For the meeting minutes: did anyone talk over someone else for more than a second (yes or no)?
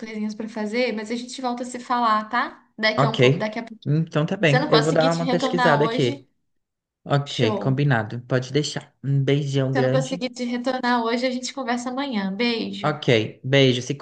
yes